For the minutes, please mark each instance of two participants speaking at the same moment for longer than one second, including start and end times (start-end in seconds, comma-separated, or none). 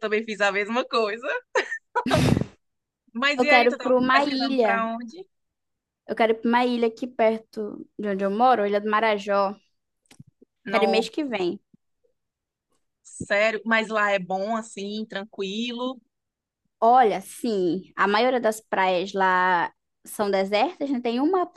3.4-4.8